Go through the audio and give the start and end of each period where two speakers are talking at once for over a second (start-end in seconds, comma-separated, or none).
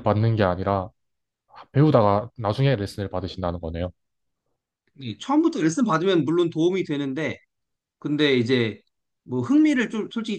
none